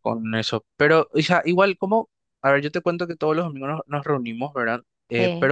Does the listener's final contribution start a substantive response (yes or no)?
no